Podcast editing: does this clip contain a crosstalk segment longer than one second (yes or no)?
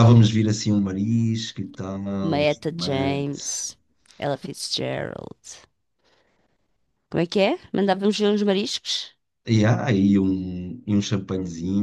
yes